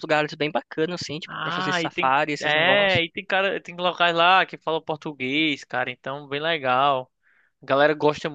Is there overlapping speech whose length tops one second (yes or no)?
yes